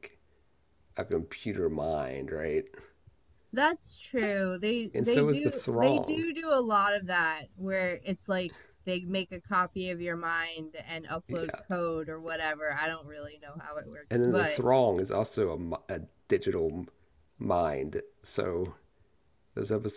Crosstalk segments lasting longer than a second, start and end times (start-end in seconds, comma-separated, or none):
4.9-6.3